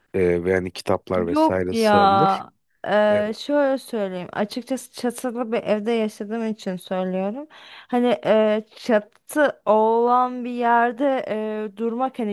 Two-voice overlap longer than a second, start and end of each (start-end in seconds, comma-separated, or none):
1.1-2.4